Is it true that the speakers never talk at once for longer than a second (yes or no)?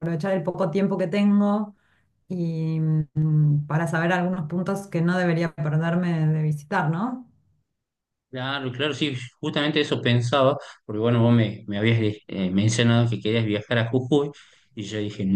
yes